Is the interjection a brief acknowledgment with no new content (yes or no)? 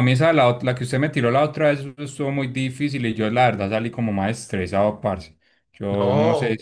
no